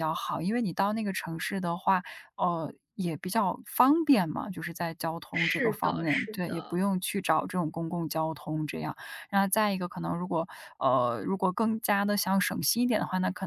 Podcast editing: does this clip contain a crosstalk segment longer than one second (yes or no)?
yes